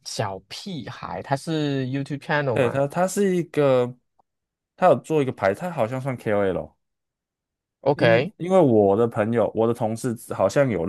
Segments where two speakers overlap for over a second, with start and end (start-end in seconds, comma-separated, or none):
none